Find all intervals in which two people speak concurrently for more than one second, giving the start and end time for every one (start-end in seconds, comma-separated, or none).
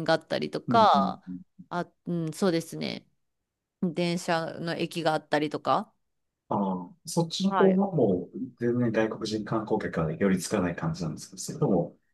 none